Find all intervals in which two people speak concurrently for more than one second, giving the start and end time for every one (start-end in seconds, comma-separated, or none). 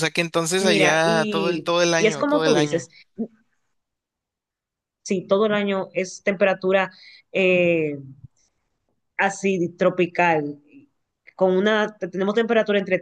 0.6-2.9